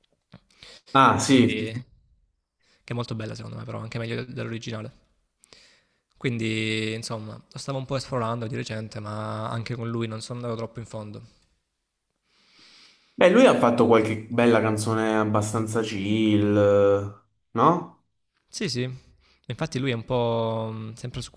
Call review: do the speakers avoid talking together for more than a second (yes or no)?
yes